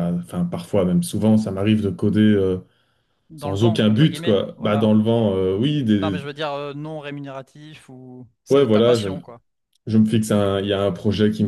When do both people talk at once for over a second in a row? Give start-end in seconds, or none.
3.4-4.9